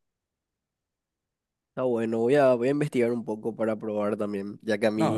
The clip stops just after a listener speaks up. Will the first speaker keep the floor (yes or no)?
no